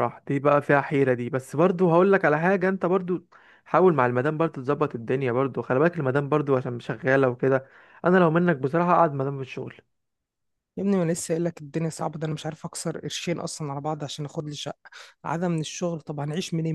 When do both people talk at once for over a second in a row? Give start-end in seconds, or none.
none